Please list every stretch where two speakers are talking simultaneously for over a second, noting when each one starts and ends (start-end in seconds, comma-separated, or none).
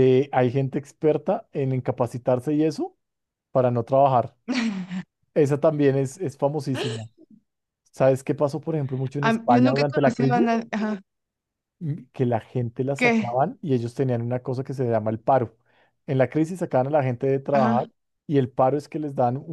9.2-10.5